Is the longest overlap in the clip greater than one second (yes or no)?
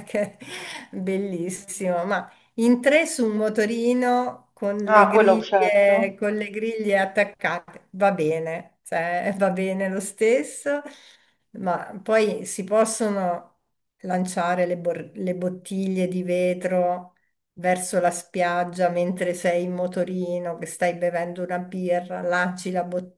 yes